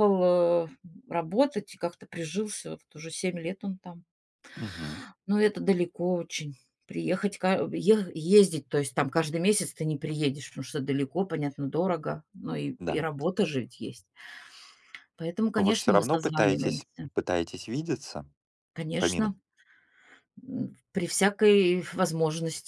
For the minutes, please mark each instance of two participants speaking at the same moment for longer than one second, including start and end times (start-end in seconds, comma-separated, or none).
15.6-17.1